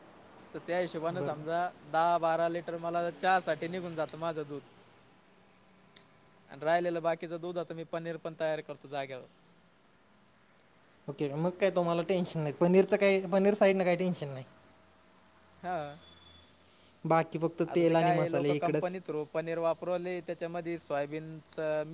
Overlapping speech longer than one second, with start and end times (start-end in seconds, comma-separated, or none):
17.7-18.9